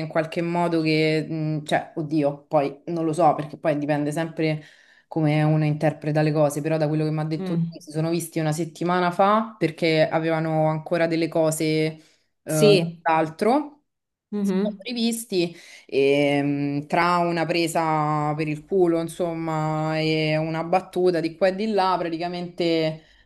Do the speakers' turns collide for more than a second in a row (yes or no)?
no